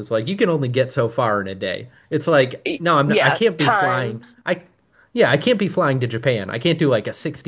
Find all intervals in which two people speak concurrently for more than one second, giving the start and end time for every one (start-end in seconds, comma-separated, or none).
2.7-4.2